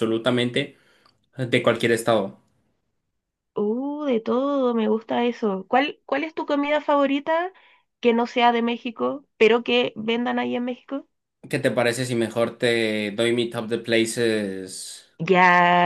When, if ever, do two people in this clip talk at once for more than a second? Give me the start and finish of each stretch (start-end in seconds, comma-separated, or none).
none